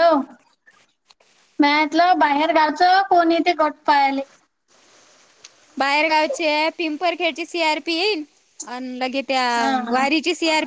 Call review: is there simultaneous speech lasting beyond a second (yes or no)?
no